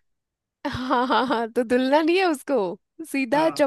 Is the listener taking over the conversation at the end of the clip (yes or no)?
no